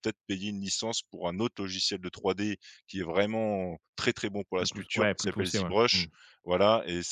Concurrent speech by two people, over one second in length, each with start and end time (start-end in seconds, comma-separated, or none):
4.5-6.0